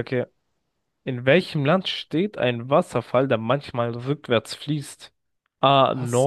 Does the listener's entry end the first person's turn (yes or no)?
no